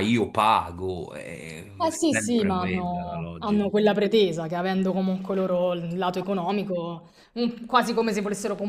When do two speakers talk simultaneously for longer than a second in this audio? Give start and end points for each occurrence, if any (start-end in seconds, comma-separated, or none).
1.8-3.7